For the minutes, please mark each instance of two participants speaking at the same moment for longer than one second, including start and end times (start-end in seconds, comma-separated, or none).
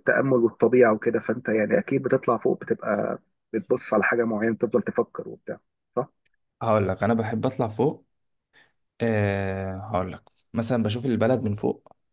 none